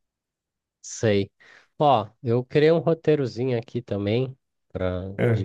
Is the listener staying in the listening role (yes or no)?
yes